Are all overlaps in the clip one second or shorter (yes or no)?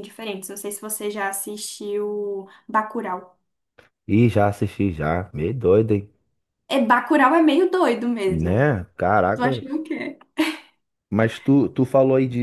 yes